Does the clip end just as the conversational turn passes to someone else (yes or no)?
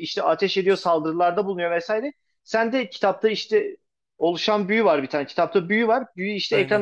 no